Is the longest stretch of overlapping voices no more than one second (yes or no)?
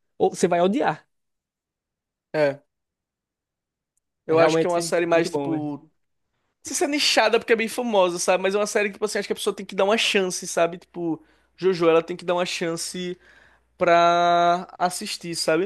no